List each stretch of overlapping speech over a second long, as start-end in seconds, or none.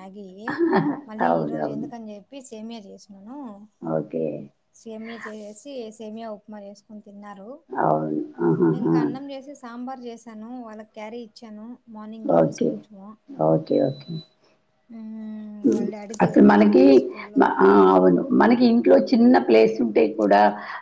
none